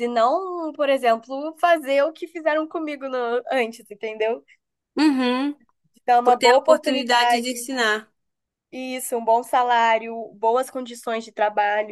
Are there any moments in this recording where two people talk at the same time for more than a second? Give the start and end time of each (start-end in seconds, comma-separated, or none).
6.2-7.7